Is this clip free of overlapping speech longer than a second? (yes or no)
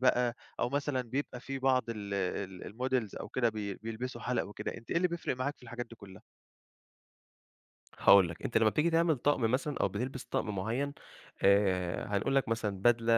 yes